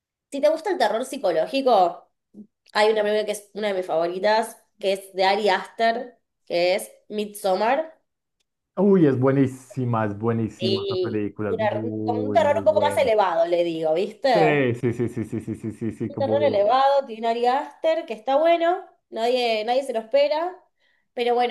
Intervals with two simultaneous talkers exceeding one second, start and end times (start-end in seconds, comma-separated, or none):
10.6-13.1